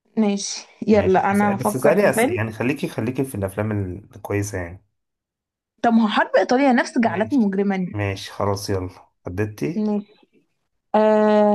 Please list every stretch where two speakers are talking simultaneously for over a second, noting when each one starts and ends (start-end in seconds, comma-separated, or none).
0.9-2.4